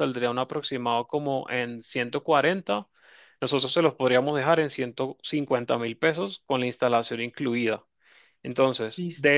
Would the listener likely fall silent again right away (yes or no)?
yes